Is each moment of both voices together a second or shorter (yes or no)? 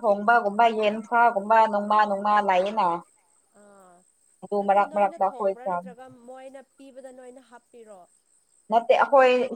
yes